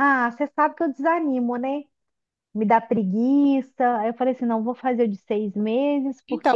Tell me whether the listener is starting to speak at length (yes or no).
yes